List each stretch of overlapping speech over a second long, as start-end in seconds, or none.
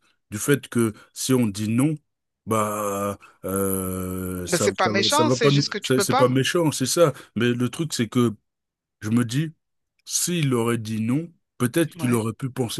4.5-6.3